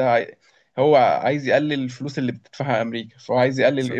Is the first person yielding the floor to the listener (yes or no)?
no